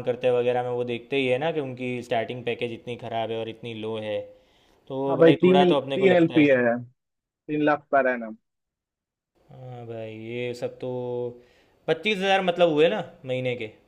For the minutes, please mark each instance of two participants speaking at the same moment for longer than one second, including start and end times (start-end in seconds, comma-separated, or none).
5.1-6.4